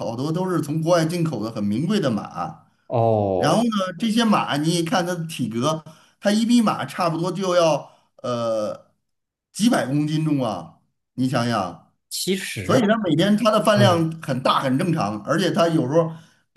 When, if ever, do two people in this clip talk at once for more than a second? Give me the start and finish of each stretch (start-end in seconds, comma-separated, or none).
none